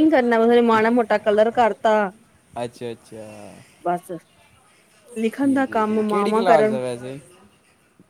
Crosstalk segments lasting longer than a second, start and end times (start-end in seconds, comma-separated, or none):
5.4-6.8